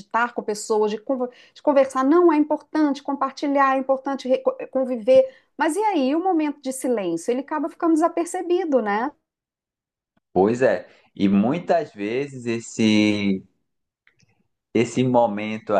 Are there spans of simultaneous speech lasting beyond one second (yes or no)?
no